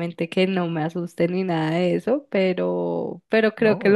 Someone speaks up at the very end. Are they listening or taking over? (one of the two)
listening